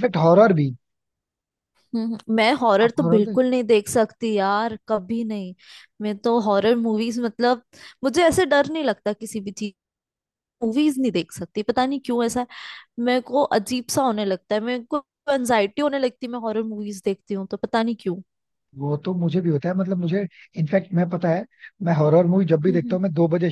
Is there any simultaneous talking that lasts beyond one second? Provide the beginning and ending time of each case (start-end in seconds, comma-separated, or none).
none